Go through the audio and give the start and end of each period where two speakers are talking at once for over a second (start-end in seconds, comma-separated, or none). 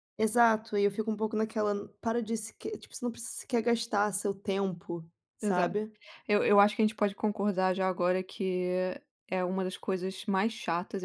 none